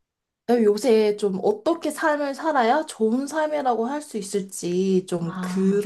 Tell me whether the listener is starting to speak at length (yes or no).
no